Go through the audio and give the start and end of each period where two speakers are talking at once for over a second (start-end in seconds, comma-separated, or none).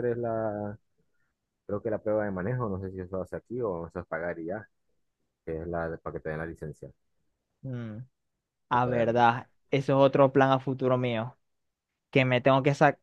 none